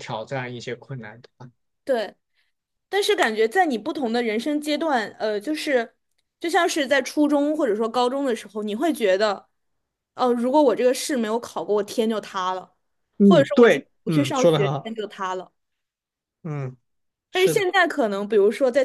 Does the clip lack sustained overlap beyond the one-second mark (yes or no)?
no